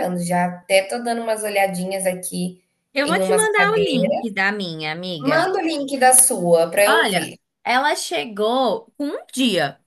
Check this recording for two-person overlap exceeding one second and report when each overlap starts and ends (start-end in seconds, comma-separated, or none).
3.0-4.4